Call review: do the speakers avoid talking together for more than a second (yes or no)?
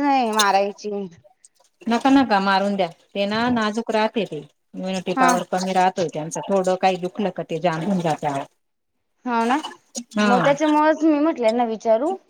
yes